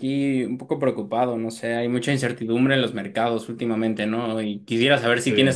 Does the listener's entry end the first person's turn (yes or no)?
no